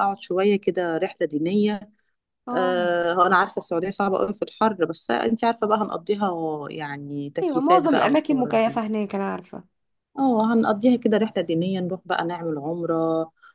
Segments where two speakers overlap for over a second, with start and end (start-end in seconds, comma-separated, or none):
7.4-8.8